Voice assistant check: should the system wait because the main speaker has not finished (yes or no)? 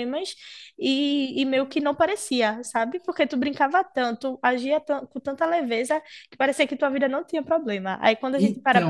yes